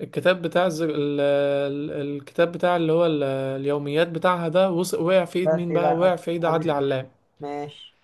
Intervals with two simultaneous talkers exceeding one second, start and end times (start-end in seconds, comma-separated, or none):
5.4-7.0